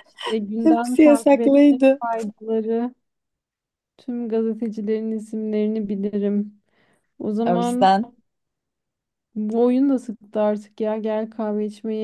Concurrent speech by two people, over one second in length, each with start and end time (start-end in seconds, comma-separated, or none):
0.6-2.0